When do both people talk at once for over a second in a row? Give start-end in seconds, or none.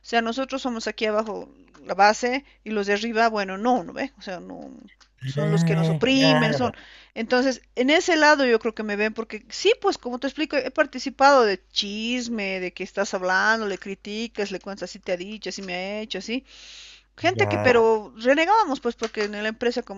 5.4-6.8